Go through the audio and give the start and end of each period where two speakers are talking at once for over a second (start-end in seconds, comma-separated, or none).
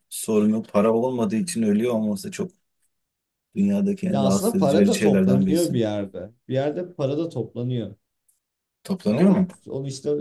4.1-5.8